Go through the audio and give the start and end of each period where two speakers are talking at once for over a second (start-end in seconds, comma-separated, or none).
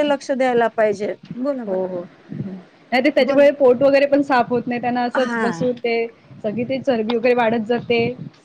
none